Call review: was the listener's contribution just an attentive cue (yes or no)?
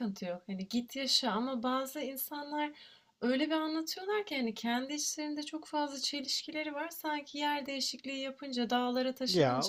yes